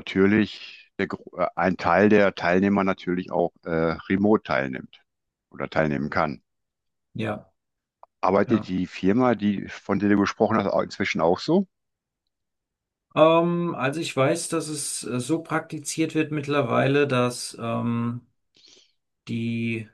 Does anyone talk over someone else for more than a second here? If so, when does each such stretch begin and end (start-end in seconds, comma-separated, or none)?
none